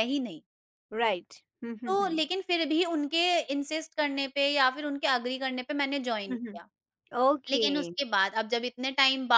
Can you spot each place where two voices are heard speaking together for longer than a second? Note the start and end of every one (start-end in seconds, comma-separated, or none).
none